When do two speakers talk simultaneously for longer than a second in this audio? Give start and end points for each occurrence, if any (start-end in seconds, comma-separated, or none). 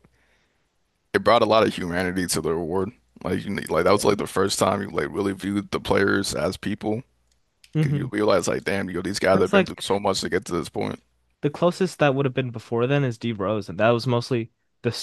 none